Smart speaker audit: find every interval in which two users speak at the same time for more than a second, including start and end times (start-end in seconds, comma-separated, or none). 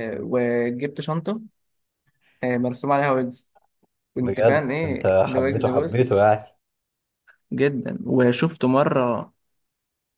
4.2-6.3